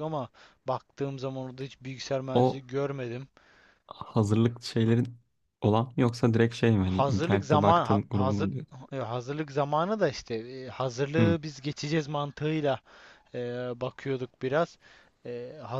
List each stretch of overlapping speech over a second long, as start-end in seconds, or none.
6.8-8.5